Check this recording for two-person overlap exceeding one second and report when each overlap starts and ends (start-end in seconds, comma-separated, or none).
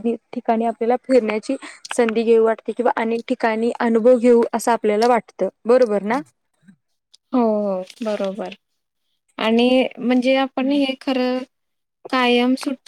none